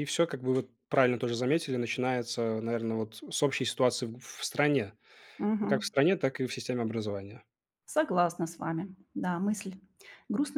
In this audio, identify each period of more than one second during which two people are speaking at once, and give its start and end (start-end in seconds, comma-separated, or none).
none